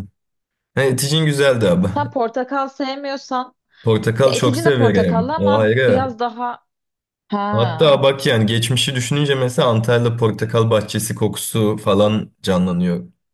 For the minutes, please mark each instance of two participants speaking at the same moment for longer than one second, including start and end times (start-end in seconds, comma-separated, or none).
4.2-6.2